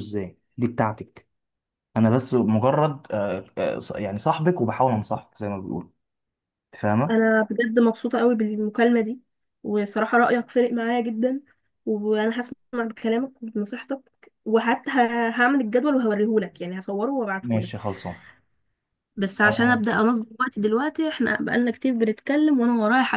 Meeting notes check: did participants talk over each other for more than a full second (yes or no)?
no